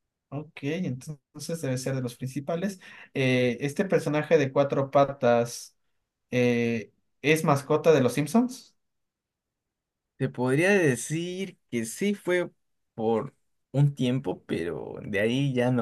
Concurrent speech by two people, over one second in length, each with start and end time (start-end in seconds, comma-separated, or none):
none